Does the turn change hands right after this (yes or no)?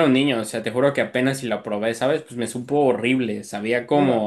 yes